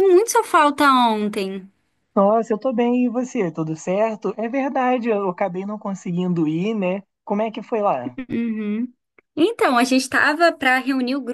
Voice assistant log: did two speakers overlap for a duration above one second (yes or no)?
no